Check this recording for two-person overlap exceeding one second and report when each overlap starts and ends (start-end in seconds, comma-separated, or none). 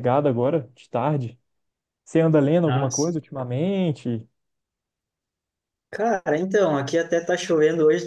none